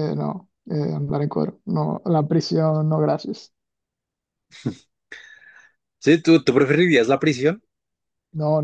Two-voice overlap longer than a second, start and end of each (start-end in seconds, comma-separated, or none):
none